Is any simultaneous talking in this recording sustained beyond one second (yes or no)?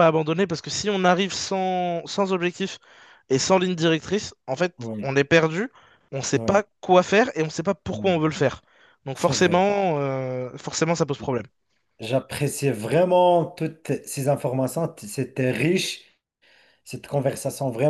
no